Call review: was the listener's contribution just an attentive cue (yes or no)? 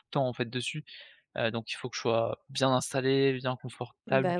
no